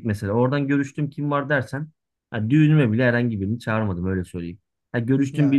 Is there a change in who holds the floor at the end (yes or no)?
no